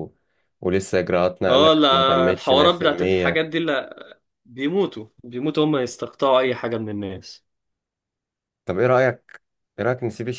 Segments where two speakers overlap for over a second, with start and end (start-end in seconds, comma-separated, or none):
1.5-3.3